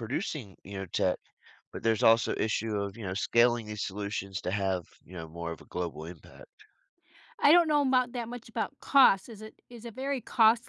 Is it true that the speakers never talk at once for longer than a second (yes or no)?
yes